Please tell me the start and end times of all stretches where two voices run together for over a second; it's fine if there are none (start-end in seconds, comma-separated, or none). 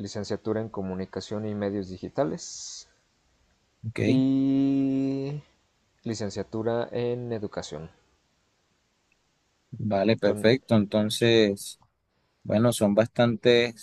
none